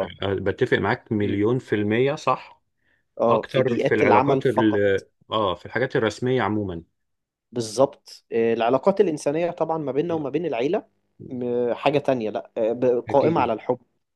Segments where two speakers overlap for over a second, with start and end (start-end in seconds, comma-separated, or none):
3.3-4.7